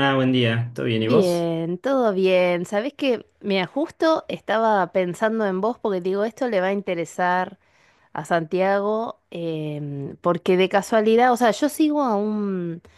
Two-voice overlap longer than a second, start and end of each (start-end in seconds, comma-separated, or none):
none